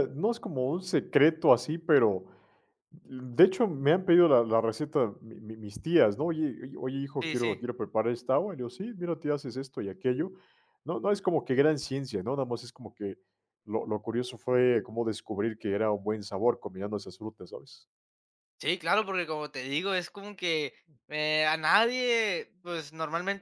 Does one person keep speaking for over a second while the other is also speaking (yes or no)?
no